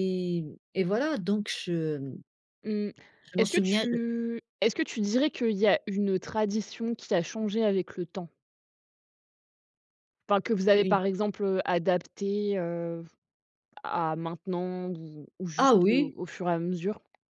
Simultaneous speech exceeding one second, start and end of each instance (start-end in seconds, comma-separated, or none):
none